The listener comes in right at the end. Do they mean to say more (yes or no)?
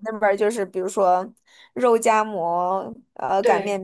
no